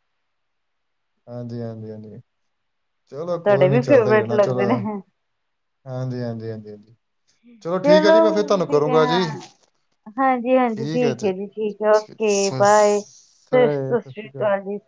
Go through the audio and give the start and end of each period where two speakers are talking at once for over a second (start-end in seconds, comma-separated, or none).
3.4-4.7, 12.2-13.6